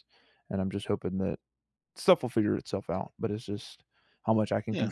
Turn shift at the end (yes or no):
no